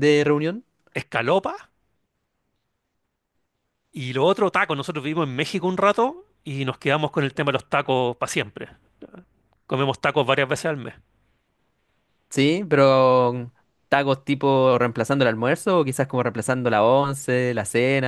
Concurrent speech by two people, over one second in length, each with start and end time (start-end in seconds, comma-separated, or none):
none